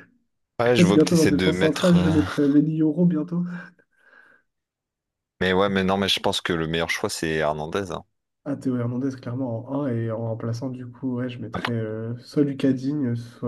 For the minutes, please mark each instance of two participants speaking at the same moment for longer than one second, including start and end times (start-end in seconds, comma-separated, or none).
0.8-2.1